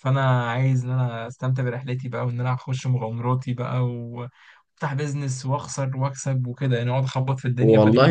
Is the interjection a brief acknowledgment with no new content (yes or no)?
no